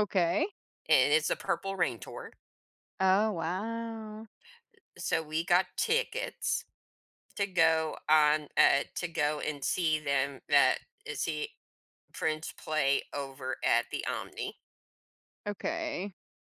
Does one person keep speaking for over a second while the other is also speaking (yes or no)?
no